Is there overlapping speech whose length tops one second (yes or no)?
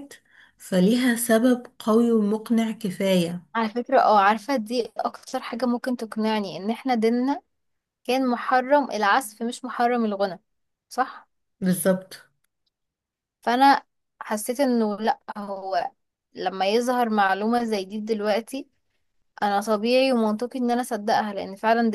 no